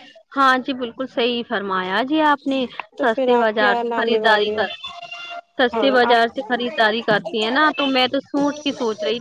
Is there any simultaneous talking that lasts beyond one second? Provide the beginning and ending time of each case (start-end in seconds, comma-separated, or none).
3.0-4.6